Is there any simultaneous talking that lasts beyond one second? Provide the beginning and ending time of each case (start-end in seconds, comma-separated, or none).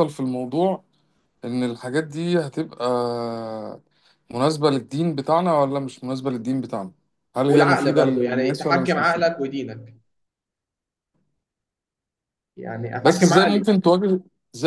7.5-9.3